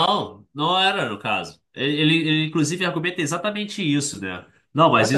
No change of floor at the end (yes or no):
yes